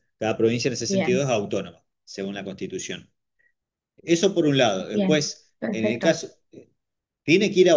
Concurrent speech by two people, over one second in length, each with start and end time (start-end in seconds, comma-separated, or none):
4.8-6.2